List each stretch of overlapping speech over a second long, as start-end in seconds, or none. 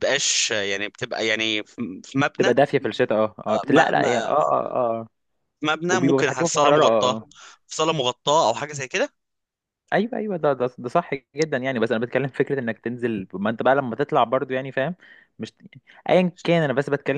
5.9-7.1